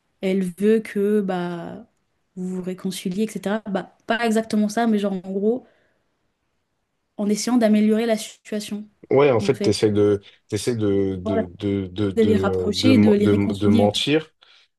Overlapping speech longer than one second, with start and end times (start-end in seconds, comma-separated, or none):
12.2-13.8